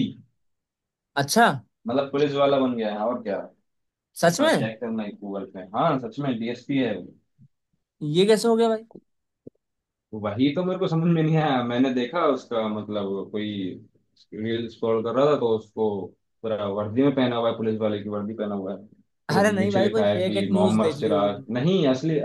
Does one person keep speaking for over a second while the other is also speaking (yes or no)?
yes